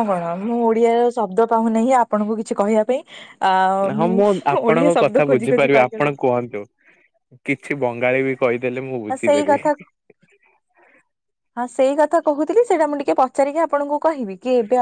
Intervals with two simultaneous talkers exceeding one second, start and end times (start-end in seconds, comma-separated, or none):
4.7-6.3